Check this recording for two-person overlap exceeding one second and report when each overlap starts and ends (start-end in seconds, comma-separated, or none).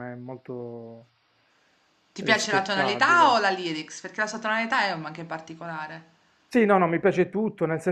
2.2-3.4